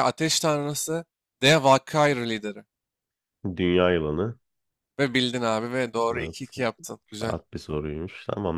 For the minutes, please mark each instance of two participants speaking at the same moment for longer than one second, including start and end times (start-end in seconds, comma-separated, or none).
none